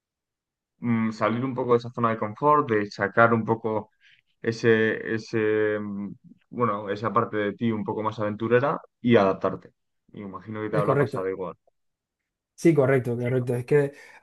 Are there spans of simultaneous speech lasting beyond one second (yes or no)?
no